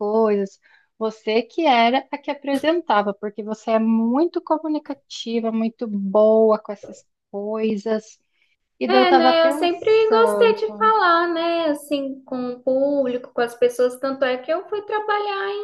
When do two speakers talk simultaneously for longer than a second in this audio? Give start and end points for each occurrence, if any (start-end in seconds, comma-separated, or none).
8.9-10.6